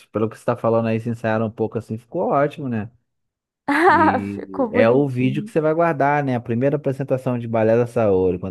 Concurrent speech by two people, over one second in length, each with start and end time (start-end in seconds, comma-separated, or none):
3.9-5.5